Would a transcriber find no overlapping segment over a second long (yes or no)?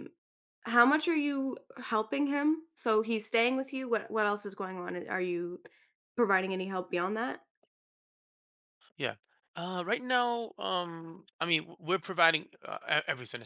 yes